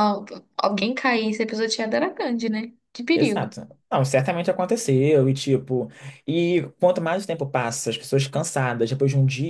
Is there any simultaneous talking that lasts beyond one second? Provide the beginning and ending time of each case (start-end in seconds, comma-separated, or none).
none